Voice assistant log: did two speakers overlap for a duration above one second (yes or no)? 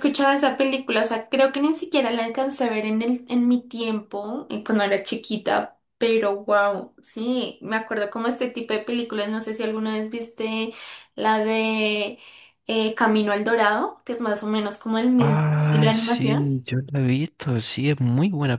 yes